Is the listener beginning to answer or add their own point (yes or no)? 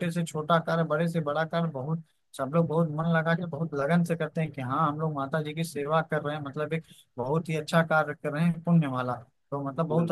no